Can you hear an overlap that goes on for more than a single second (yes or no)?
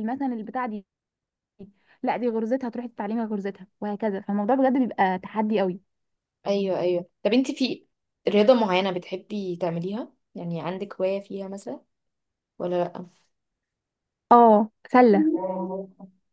no